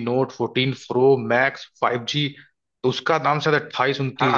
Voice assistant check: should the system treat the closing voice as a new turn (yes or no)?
no